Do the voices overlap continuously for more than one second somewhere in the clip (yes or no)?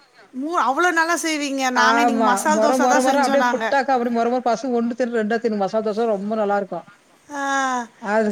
yes